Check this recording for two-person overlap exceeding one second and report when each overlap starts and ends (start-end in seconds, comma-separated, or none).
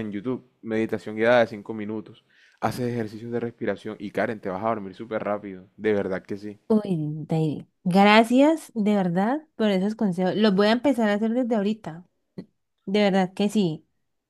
none